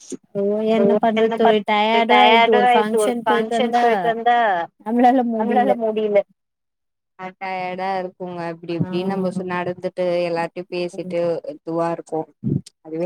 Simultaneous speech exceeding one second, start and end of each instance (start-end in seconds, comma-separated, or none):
2.1-3.8